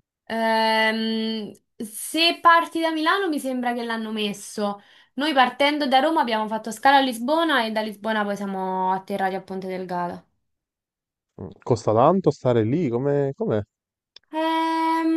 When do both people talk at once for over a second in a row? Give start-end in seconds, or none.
none